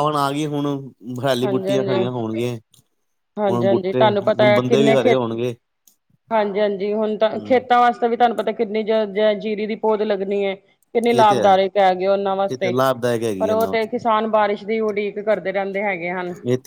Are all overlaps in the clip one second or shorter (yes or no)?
no